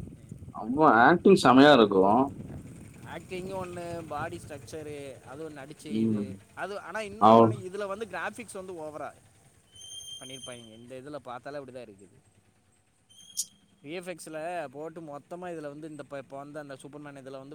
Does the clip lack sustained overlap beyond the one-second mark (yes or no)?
yes